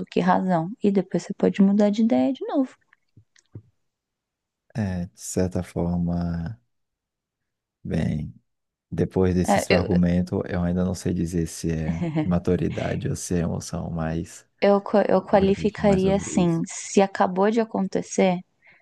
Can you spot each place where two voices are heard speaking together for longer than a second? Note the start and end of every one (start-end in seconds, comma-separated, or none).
15.3-16.6